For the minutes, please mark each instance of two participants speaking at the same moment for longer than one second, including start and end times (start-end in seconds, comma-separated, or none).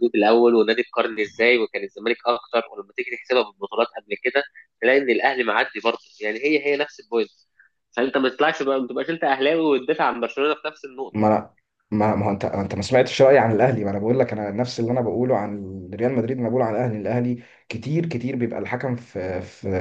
none